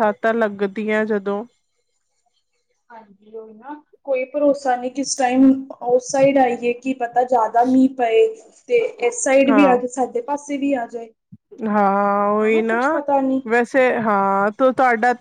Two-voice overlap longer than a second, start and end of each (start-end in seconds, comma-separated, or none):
none